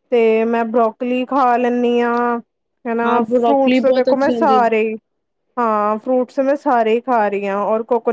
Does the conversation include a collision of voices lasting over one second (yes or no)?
yes